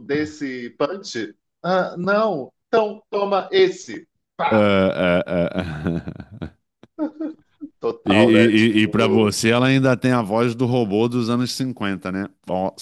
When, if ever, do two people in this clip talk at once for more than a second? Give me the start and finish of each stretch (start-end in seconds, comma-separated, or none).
8.0-9.3